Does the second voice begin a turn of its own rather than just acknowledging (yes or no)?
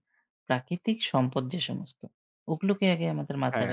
no